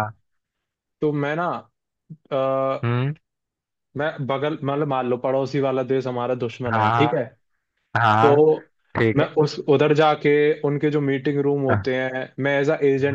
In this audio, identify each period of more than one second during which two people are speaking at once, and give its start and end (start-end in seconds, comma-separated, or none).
none